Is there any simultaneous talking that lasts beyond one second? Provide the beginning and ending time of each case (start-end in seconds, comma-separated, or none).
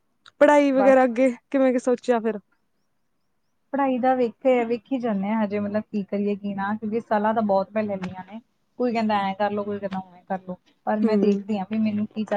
none